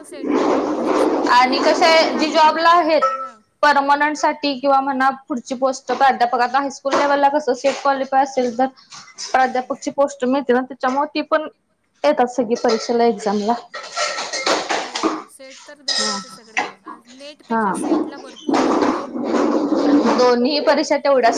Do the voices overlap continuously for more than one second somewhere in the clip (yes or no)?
yes